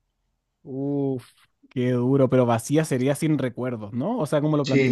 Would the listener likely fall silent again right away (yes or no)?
no